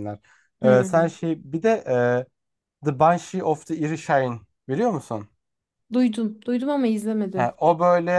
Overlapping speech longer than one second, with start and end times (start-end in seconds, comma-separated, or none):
none